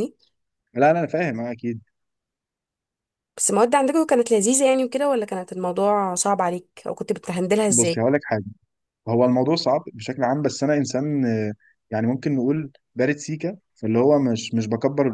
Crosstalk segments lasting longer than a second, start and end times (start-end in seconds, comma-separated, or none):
none